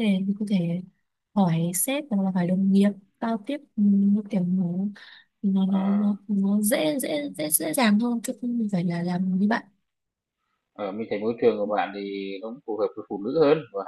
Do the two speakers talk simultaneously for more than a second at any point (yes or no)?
no